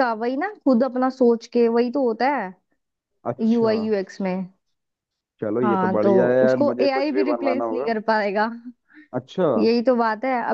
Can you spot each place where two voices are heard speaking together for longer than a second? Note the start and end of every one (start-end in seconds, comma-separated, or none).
5.6-7.9